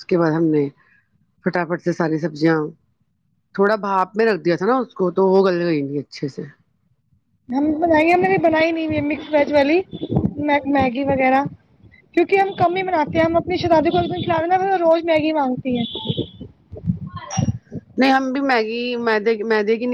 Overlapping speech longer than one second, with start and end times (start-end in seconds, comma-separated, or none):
none